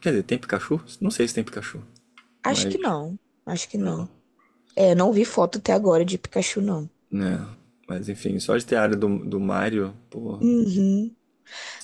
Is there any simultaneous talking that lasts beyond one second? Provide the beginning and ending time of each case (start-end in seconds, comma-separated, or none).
none